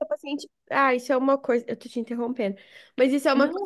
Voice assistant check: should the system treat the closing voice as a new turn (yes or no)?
no